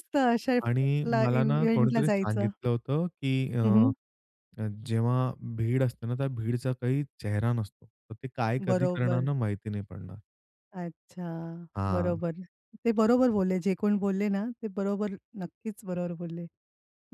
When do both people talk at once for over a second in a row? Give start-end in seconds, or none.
1.2-2.5